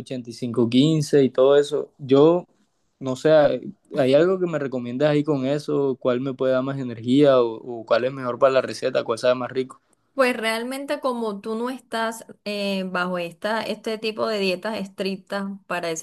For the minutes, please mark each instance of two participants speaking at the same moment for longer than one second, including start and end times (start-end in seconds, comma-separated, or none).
none